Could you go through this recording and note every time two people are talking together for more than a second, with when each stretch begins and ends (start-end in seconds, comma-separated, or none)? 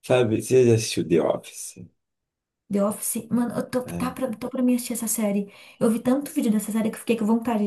none